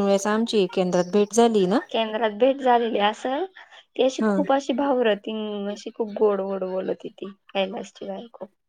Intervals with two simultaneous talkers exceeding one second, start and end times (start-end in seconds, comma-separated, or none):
none